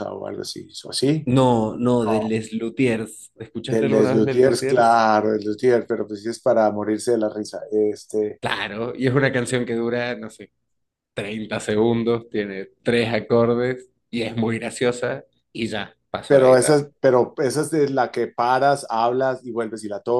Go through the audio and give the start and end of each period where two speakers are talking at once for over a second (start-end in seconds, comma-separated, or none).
3.7-5.0